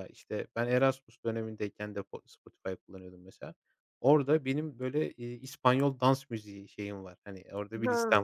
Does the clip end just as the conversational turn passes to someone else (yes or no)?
no